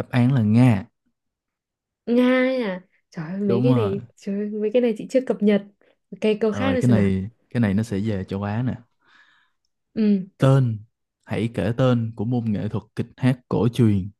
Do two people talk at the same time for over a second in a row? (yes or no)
no